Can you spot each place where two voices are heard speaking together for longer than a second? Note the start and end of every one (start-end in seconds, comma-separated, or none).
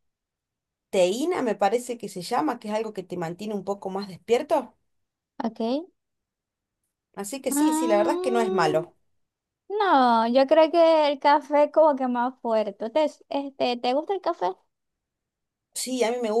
7.5-8.8